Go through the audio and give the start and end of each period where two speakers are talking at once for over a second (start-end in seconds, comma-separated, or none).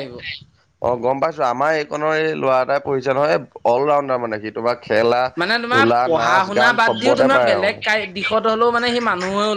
5.7-7.7